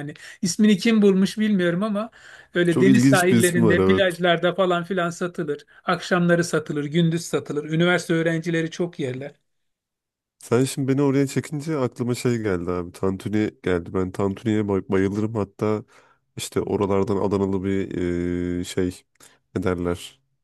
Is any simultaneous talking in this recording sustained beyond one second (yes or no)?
yes